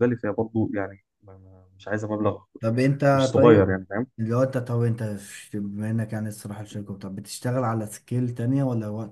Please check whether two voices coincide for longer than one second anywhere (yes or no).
no